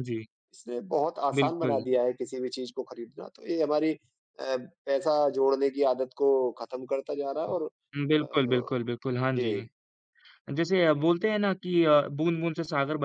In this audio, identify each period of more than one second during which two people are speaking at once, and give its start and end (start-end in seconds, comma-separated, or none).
none